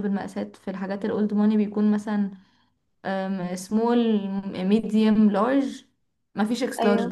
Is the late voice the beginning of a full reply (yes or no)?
no